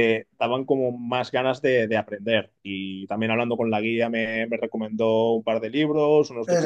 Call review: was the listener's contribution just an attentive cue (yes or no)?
no